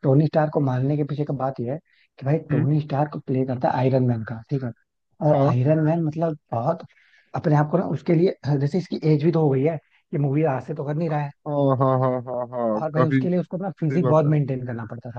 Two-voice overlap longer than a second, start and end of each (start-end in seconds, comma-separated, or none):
12.8-14.3